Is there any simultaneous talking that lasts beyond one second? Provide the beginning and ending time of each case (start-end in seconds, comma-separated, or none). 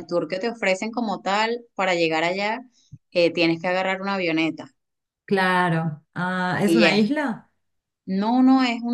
none